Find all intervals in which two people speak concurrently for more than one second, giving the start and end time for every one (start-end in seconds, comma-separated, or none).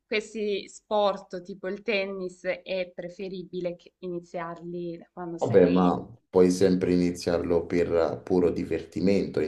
none